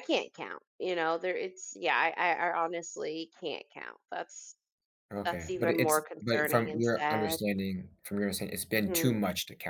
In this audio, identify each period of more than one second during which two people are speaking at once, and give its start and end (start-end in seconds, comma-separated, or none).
5.2-7.4